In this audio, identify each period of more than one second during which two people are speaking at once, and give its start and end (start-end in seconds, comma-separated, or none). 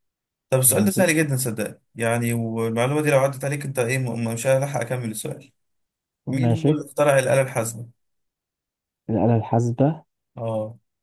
none